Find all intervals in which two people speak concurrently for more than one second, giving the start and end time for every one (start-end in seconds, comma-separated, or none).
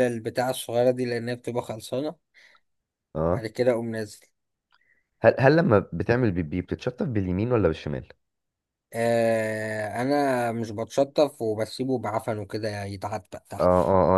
none